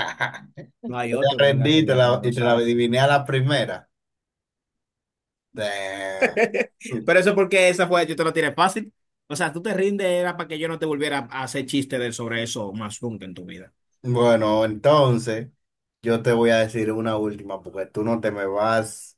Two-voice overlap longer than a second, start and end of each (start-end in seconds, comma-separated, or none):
0.9-2.6